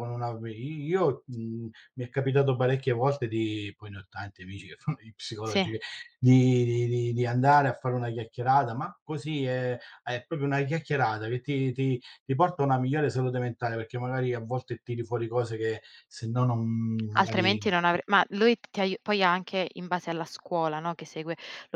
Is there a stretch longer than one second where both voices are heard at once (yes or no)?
no